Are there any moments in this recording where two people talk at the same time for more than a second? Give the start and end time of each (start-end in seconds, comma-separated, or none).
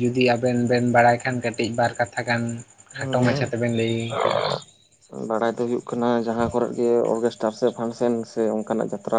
none